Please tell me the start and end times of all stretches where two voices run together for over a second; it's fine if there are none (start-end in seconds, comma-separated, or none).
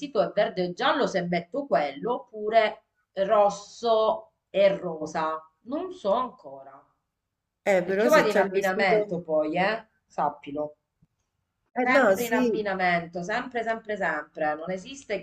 7.8-9.2